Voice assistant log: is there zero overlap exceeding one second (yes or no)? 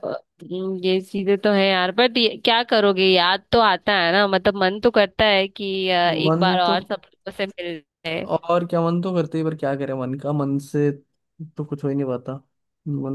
yes